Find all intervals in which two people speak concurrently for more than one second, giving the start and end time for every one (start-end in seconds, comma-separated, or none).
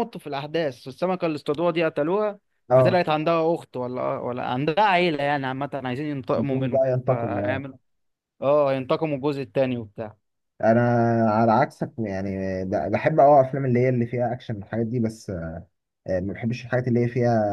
6.4-7.7